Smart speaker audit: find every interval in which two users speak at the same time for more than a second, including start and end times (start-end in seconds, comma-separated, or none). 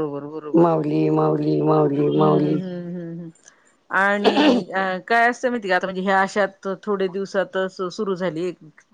none